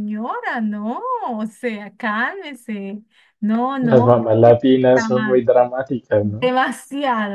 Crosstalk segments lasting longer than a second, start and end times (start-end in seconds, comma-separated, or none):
none